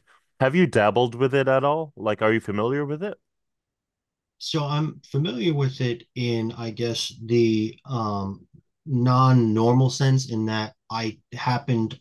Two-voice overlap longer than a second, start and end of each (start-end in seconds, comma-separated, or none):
none